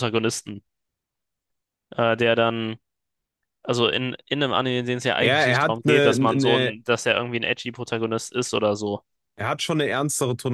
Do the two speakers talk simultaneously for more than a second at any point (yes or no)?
yes